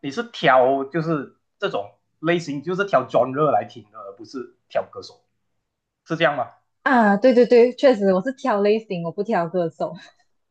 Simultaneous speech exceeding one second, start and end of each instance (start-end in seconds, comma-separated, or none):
none